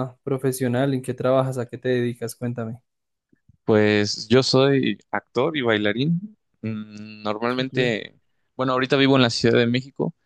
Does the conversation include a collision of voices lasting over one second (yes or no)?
no